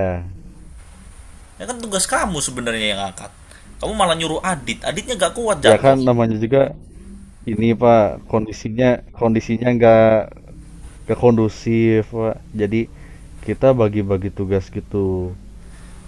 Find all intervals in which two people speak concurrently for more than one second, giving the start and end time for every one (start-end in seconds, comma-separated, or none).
none